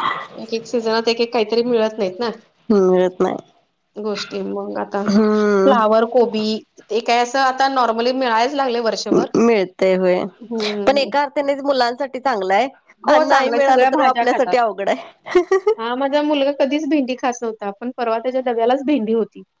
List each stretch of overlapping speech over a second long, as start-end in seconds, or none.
13.1-14.6